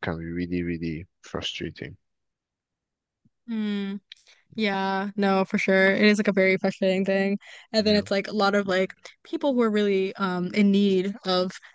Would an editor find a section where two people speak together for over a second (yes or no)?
no